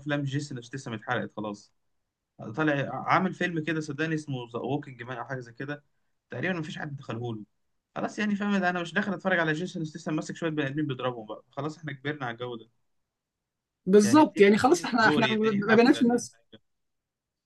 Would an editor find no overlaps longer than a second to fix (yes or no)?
no